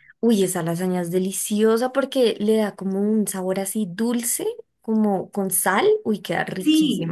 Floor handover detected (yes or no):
yes